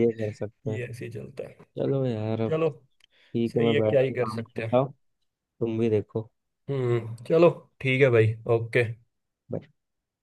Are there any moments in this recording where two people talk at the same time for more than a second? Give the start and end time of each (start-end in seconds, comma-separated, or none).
3.5-4.8